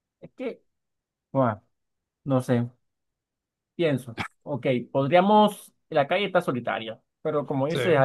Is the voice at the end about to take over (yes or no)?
no